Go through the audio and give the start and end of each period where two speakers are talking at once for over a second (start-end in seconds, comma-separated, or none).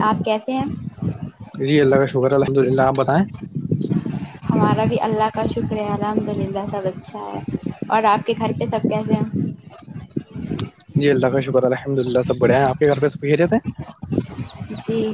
none